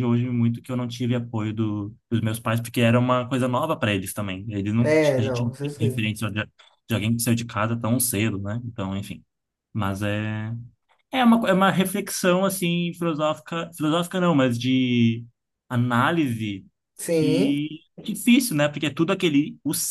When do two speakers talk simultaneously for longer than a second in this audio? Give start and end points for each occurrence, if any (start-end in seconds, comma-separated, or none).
4.8-6.1